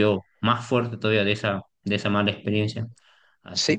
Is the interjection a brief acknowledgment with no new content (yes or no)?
no